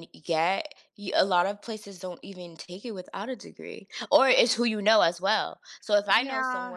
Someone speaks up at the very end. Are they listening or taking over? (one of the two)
listening